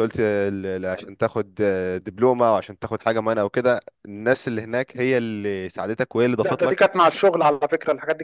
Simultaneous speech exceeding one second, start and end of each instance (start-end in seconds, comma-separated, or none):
none